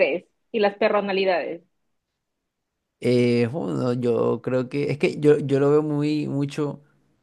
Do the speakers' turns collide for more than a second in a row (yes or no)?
no